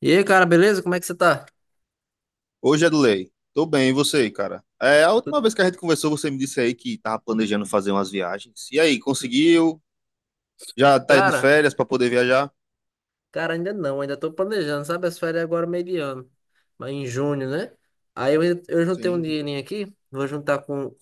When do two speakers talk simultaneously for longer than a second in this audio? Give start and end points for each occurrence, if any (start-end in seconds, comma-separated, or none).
none